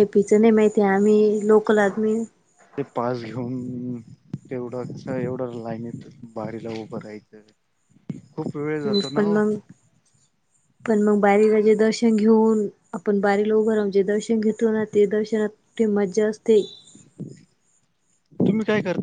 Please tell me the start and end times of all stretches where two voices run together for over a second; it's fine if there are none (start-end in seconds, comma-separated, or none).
none